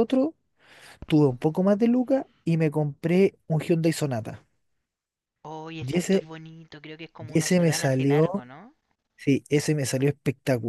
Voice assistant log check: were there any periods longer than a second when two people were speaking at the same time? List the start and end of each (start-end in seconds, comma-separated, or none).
7.2-8.4